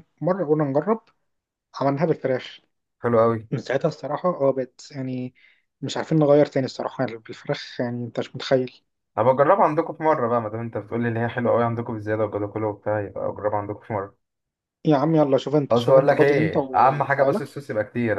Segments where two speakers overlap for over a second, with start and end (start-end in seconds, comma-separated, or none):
15.7-17.4